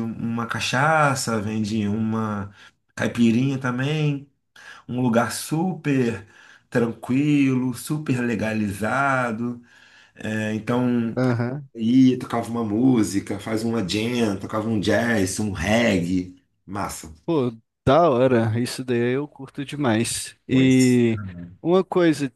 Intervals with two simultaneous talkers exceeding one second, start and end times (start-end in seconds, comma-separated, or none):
none